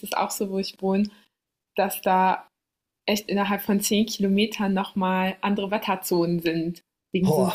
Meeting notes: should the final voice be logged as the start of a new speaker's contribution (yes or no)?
no